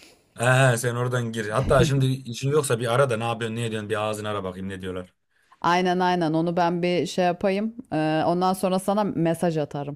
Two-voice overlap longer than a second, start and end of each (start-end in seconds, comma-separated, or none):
none